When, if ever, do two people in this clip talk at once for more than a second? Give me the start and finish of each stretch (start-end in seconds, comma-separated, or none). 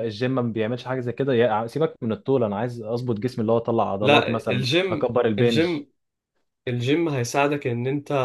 4.0-5.8